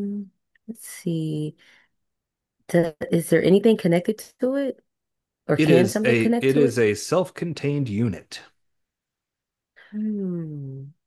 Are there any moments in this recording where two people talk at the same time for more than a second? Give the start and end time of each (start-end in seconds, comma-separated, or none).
5.6-6.8